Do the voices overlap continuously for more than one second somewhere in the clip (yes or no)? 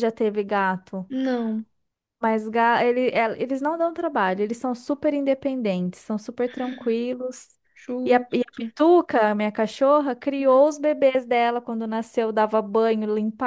no